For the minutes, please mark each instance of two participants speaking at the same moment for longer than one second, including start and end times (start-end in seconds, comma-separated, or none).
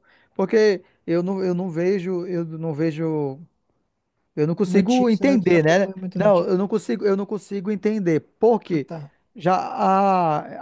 4.6-6.6